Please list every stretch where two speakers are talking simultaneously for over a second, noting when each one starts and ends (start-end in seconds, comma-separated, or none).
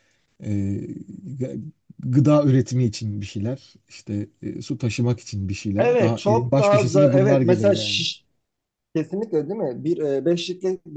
5.8-8.0